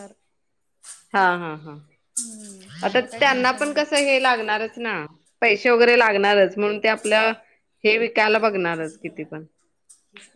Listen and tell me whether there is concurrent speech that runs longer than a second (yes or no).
yes